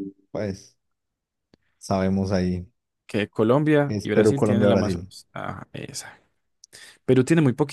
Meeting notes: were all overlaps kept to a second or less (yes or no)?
no